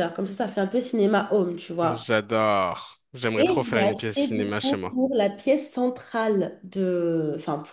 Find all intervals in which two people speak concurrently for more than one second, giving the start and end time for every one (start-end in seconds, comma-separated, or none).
3.4-5.0